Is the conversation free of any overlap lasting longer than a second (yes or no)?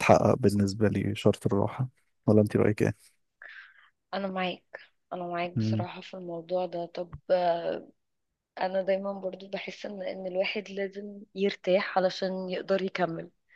yes